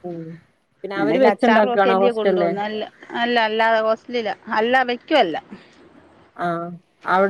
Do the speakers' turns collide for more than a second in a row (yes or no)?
yes